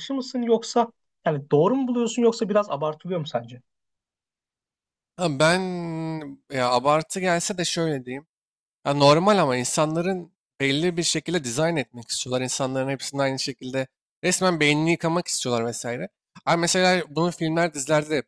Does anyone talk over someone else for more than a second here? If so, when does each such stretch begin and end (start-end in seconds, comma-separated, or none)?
none